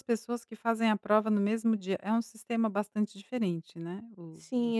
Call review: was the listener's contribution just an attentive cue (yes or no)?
no